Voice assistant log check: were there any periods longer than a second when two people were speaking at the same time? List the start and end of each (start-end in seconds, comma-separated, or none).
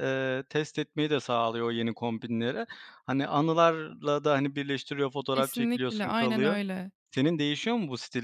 5.3-6.6